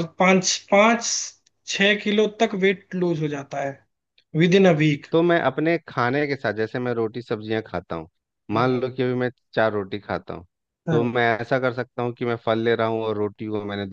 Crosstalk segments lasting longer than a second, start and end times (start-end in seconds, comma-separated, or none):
none